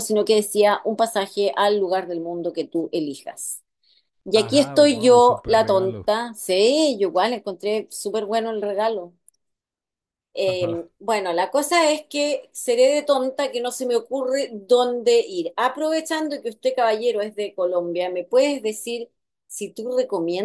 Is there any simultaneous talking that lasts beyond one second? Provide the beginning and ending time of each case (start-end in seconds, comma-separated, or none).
4.3-6.1